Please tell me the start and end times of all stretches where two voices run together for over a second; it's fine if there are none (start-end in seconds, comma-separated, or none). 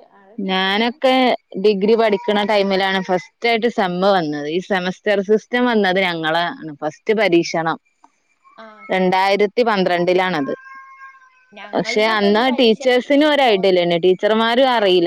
11.7-13.6